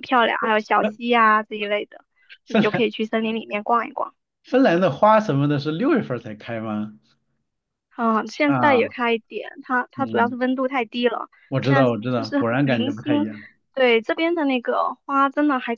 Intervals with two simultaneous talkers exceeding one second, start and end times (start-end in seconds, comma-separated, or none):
11.5-13.3